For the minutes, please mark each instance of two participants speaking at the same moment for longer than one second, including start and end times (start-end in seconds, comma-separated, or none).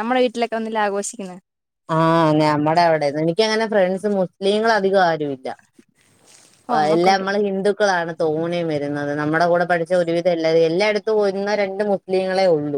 none